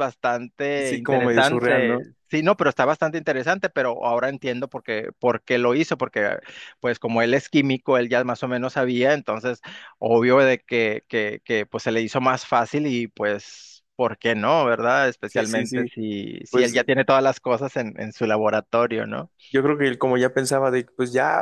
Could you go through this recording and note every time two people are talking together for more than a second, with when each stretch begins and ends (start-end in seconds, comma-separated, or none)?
0.8-2.0